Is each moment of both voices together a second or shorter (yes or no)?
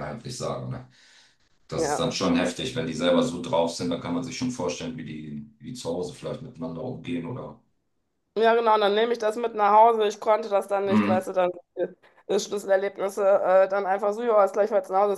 yes